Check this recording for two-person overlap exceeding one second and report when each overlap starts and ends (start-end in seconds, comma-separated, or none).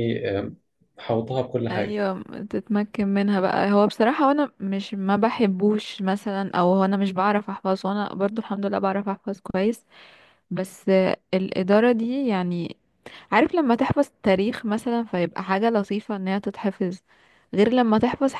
none